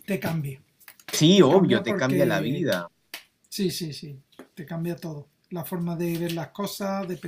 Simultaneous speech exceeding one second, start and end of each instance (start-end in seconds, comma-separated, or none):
1.3-2.7